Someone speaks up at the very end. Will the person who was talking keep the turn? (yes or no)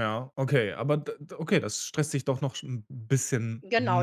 no